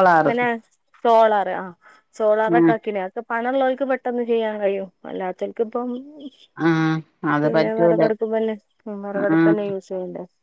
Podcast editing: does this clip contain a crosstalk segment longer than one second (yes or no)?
no